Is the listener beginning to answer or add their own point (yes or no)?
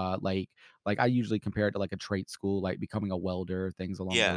no